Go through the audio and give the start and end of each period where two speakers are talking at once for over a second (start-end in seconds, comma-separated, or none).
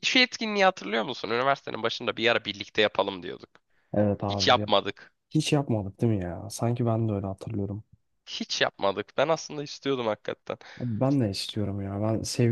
none